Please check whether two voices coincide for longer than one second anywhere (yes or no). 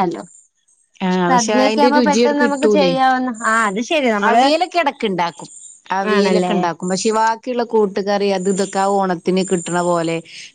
yes